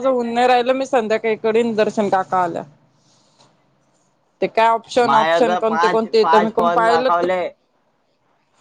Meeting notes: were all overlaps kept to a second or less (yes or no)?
no